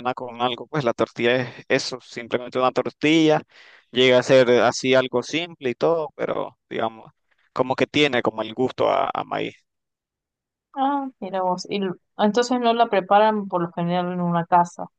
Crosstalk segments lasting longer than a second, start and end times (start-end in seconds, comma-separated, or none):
none